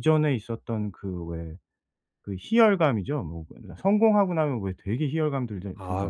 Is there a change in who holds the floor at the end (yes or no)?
yes